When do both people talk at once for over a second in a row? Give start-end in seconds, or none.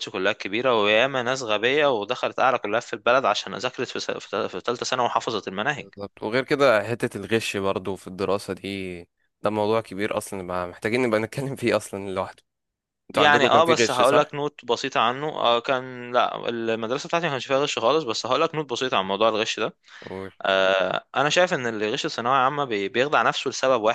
13.1-14.4